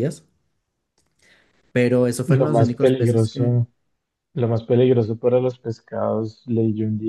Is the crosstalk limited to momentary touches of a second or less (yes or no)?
no